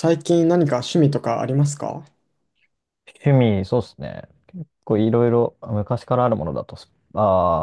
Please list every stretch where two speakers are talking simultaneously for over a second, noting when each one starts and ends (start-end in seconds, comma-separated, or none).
none